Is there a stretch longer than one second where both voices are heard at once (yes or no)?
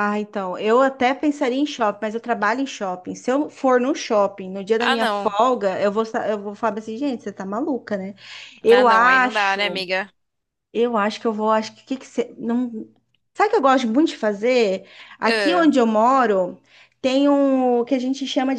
yes